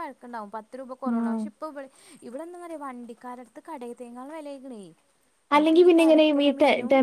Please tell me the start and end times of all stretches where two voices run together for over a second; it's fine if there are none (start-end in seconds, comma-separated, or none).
none